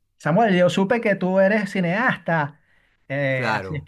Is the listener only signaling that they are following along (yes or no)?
yes